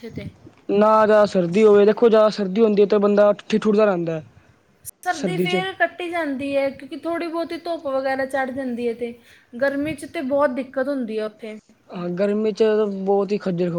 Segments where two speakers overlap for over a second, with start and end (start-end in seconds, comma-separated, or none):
none